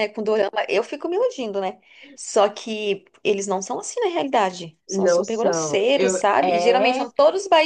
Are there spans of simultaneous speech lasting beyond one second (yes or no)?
yes